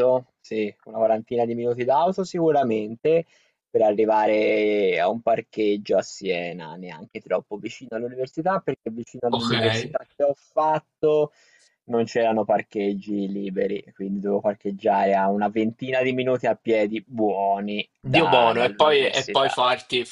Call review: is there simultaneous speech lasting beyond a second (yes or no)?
yes